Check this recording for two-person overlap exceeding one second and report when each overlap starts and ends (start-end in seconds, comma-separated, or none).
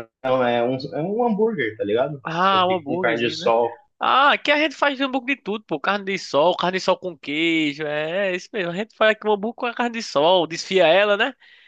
2.2-3.5